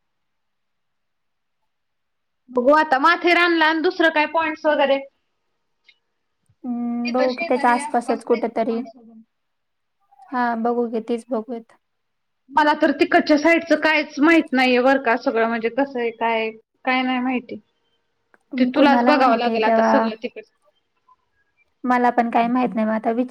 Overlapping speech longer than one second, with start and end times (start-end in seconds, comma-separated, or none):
7.0-8.8, 18.8-20.1